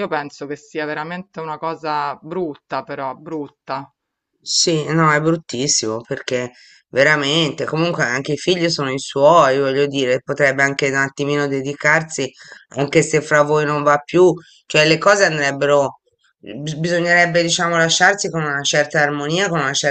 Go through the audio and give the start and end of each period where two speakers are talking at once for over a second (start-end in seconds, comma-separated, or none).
none